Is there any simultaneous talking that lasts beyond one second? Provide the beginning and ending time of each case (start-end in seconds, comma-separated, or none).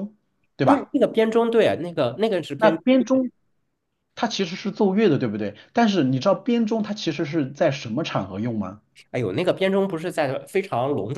none